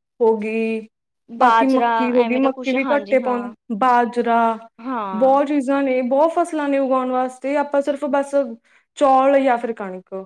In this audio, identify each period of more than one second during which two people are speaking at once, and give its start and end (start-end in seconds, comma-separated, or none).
1.4-3.4